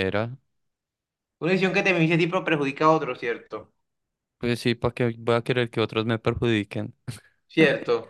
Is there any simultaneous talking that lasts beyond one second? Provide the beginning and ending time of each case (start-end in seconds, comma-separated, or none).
none